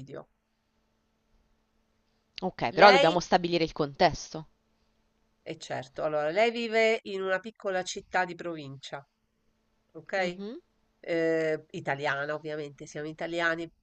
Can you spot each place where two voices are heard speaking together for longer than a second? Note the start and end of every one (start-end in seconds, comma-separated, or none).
none